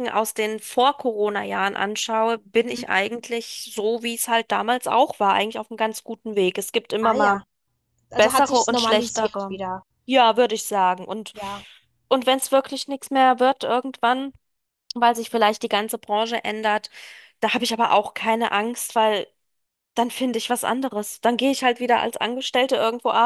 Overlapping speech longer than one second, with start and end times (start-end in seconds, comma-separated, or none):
8.2-9.6